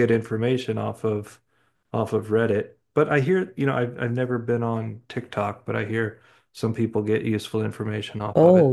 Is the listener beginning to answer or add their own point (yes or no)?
yes